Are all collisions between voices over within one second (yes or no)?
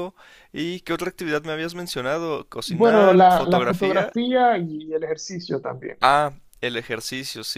no